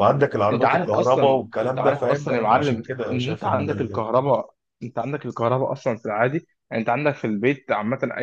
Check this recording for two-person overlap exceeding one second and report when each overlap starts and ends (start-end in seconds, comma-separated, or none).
0.5-4.0